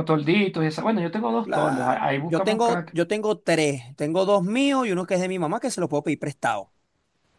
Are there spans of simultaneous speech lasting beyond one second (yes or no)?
yes